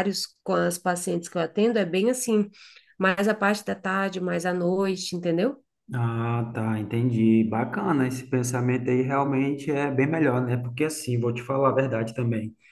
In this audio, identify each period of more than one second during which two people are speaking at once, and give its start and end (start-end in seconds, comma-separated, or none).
none